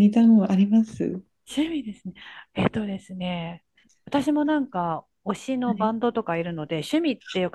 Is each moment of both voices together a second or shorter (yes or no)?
yes